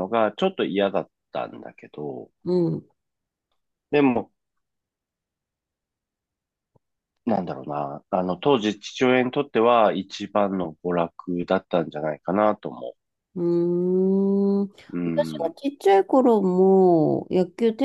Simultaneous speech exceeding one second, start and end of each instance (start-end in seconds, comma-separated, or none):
none